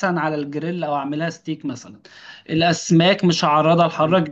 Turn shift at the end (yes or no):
no